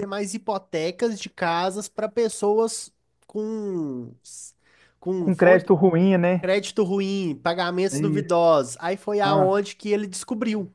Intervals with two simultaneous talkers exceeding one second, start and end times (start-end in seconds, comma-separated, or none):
none